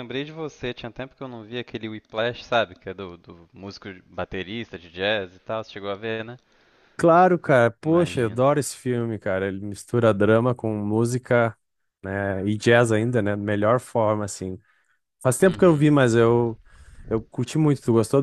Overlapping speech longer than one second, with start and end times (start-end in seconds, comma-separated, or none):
none